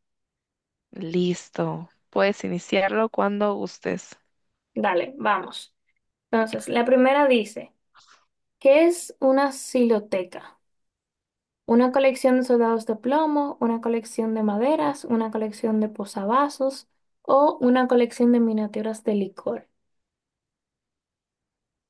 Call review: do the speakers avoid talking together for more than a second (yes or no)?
yes